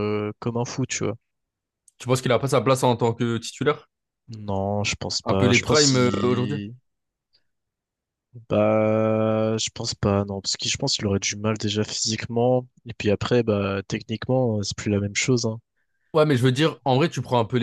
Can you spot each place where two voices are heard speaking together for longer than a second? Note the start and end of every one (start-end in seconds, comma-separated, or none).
5.2-6.6